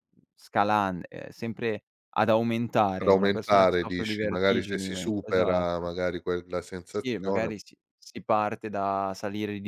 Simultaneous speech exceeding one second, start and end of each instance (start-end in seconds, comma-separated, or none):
3.0-5.9